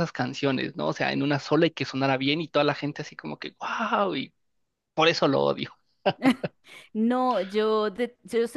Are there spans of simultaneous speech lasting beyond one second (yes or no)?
no